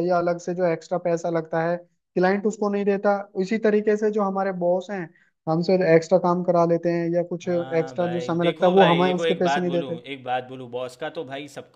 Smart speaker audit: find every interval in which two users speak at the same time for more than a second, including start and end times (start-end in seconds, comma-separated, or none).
7.5-9.9